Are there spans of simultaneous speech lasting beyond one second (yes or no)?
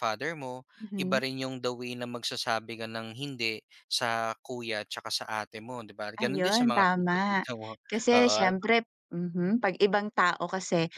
yes